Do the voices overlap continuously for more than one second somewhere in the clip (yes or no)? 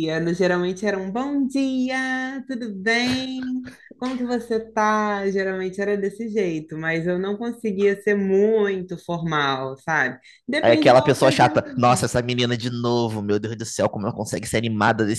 yes